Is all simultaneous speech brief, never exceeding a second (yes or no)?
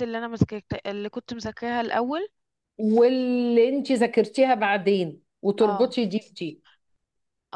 yes